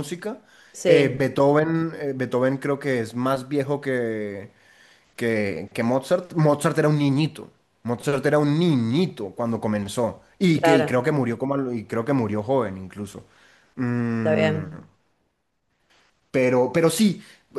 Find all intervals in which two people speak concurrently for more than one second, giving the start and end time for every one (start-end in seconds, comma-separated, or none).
none